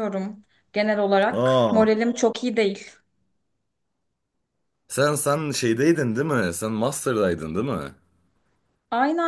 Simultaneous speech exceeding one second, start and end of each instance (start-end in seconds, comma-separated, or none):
none